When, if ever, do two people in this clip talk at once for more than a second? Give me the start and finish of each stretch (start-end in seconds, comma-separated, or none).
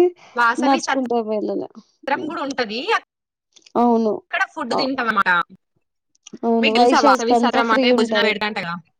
6.6-8.3